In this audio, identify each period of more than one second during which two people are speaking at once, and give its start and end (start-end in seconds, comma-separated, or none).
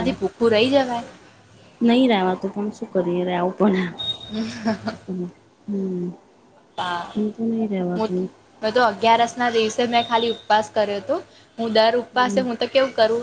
none